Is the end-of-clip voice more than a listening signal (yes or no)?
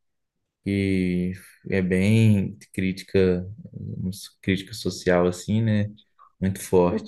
yes